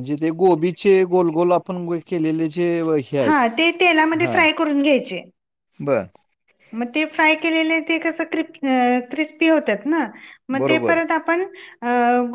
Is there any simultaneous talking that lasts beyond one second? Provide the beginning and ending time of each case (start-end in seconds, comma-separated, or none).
none